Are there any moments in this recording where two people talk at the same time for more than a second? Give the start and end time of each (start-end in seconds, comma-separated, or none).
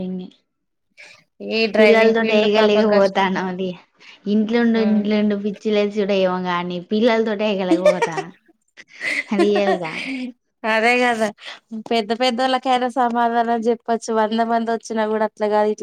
1.8-3.3